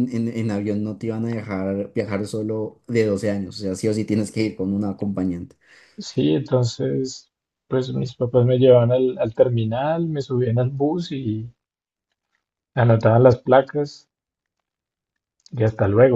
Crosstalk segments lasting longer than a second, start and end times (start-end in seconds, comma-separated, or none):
none